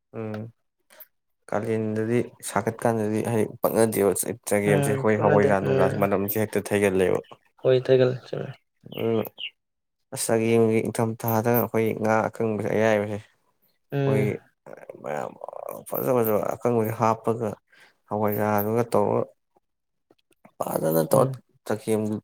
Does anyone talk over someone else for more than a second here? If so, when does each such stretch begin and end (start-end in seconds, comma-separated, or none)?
4.7-6.1